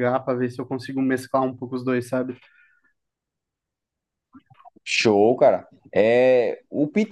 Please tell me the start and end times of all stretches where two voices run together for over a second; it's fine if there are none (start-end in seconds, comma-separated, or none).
none